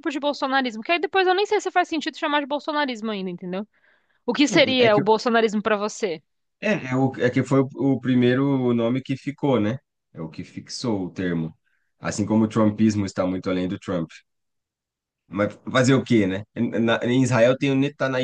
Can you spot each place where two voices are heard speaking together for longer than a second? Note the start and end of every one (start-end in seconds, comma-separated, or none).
none